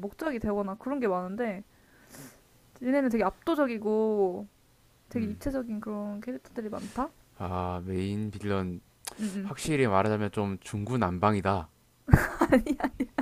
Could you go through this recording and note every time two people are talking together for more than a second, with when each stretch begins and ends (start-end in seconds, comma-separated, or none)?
none